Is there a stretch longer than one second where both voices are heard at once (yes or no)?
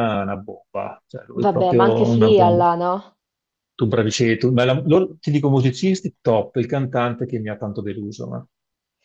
yes